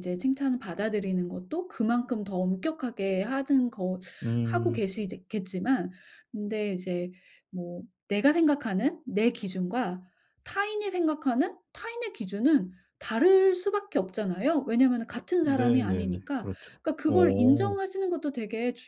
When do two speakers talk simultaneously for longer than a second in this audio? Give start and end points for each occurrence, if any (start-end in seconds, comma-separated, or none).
15.4-17.7